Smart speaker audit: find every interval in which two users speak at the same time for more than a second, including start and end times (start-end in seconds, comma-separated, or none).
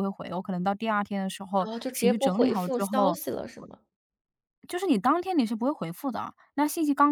1.6-3.2